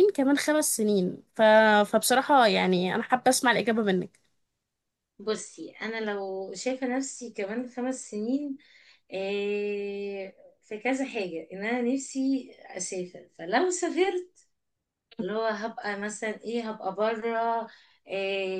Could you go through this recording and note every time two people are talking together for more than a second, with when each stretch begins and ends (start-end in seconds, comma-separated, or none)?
none